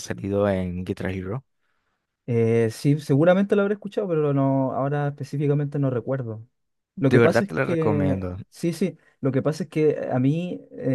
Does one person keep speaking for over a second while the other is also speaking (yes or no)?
yes